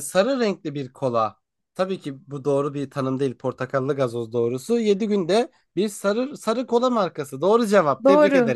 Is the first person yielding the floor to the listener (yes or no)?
yes